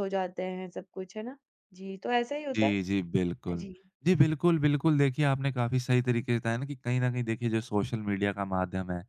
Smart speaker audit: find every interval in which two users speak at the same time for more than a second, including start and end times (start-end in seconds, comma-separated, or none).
none